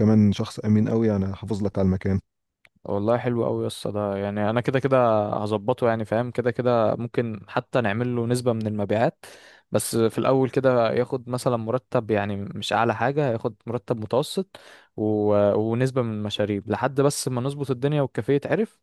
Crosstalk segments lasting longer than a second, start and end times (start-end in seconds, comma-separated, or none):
none